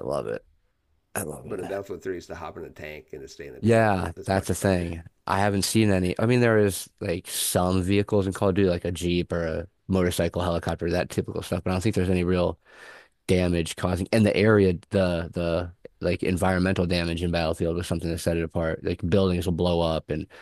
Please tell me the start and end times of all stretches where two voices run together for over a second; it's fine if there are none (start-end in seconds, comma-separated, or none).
3.6-4.9